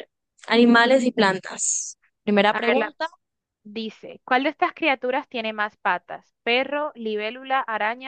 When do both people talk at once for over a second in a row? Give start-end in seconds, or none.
none